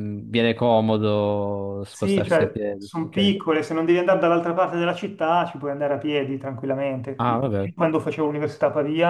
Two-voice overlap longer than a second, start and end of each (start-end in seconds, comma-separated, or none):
1.9-3.3